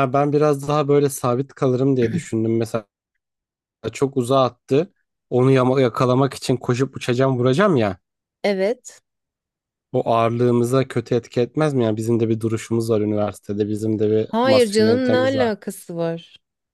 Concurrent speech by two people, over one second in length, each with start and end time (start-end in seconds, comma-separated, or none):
14.3-15.5